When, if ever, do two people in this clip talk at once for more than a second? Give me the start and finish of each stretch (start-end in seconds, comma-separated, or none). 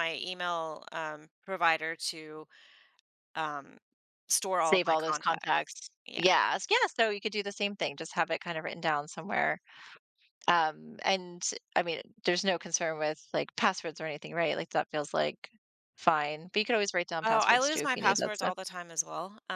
4.6-6.2, 17.2-18.5